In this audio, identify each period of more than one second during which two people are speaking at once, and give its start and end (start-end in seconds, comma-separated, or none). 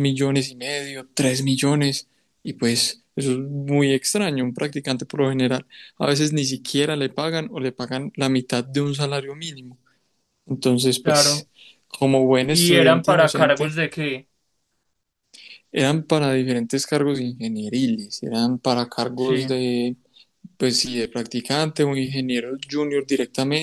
12.5-13.8